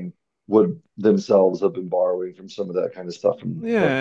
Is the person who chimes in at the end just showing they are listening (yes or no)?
no